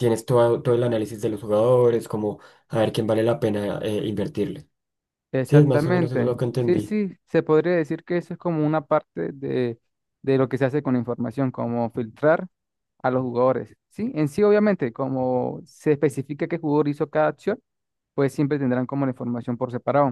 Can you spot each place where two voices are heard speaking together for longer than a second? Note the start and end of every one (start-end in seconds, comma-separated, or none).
5.5-7.0